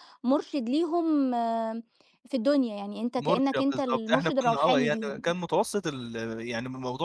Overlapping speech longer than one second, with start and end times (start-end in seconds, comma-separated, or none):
3.2-5.3